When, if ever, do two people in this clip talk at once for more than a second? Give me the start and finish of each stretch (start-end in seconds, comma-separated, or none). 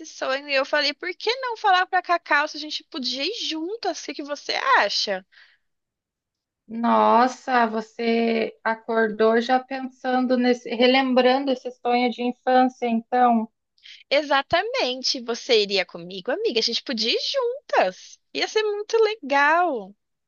none